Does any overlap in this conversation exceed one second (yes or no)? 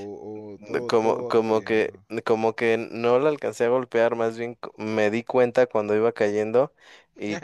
yes